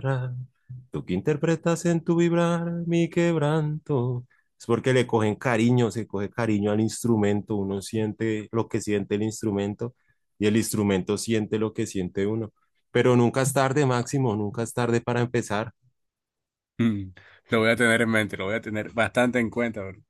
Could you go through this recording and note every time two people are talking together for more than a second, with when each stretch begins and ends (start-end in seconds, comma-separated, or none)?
none